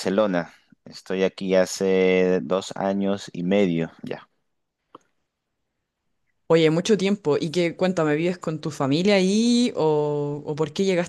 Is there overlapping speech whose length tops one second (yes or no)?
no